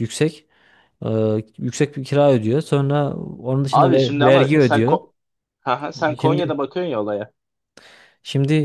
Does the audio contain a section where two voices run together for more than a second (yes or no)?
yes